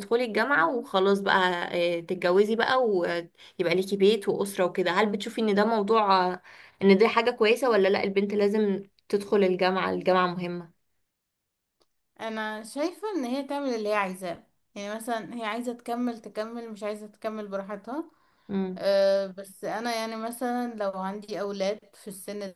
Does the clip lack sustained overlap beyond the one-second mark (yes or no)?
yes